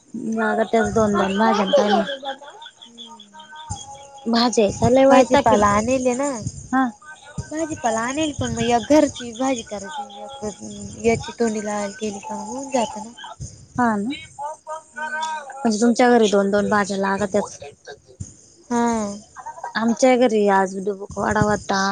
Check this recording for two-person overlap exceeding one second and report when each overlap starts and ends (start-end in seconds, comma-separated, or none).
none